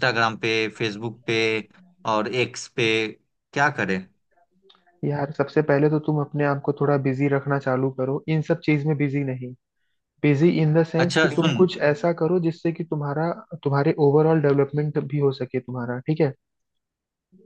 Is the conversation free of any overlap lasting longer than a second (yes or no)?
yes